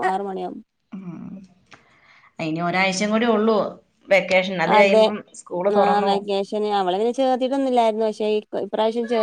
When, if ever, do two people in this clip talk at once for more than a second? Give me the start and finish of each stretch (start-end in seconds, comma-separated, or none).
none